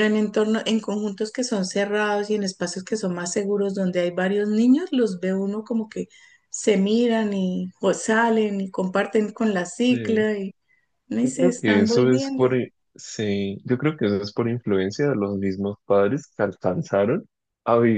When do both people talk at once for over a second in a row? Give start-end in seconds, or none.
11.2-12.5